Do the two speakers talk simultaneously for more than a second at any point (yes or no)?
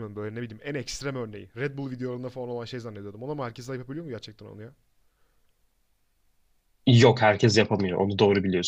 no